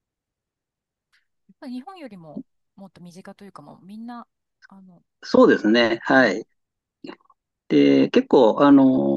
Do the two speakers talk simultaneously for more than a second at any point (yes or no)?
no